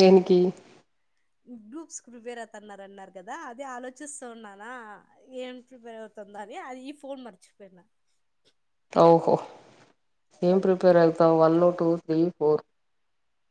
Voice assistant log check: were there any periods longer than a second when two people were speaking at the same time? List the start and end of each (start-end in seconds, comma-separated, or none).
none